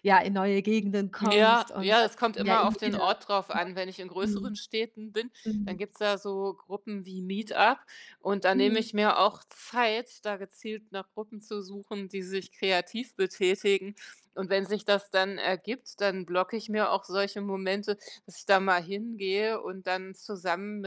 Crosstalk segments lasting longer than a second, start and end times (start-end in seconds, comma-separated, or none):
1.2-3.0